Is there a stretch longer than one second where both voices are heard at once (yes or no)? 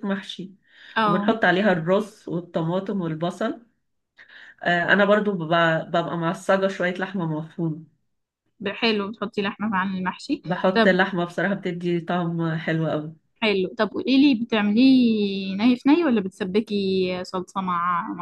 no